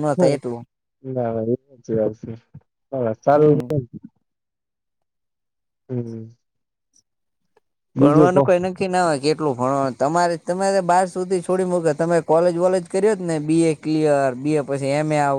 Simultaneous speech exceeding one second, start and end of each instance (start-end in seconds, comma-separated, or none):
none